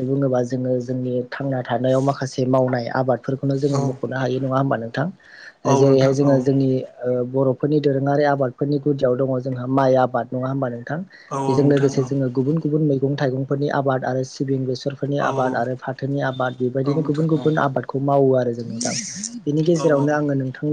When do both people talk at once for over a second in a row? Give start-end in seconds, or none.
none